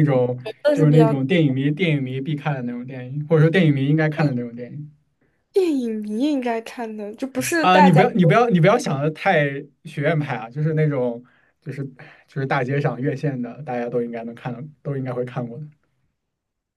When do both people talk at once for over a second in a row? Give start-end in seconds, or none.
none